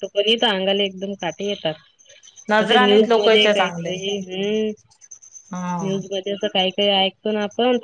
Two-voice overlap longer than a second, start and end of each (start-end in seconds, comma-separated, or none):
2.6-3.9